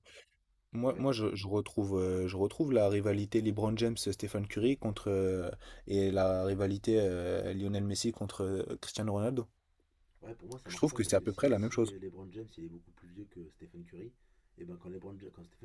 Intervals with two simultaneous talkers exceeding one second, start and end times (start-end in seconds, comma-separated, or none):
10.7-12.0